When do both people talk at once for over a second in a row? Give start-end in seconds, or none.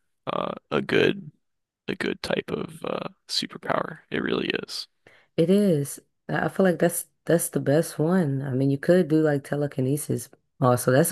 none